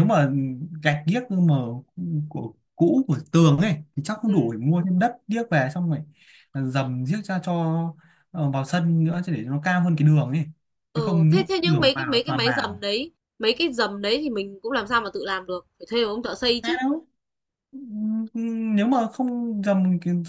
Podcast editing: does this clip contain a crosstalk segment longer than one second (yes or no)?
yes